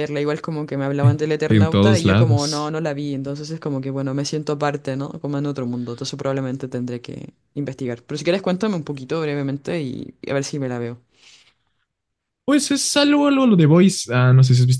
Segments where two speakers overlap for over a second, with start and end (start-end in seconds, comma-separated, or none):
1.4-2.8